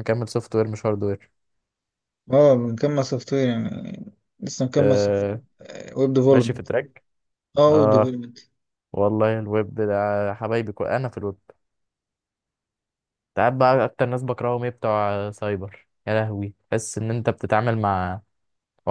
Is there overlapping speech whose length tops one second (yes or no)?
no